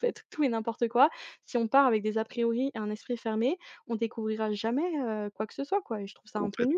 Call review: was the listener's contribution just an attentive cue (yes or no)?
no